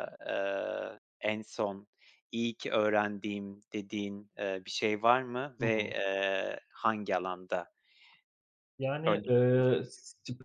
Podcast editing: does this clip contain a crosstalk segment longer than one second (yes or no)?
no